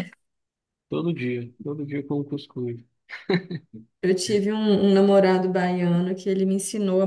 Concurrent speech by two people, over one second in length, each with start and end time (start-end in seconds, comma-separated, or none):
none